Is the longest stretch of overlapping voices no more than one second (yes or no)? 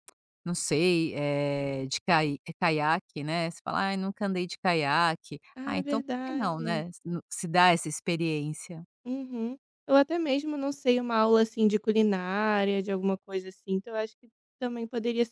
no